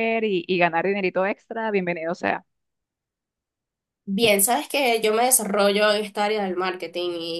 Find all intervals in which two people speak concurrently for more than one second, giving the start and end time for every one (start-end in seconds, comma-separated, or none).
none